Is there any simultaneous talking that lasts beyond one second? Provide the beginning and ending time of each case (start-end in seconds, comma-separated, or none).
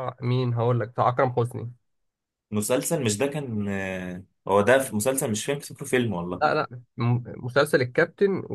none